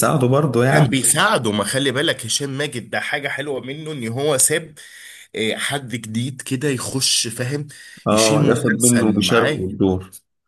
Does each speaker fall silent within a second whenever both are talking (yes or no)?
no